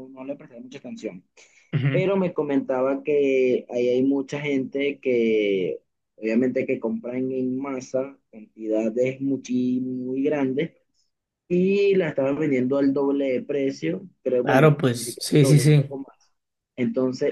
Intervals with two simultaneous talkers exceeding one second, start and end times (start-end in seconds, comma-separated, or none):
14.4-15.9